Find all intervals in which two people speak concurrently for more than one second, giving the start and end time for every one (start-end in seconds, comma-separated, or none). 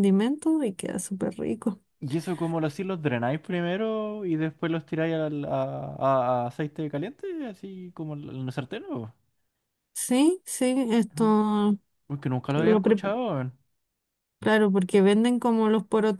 none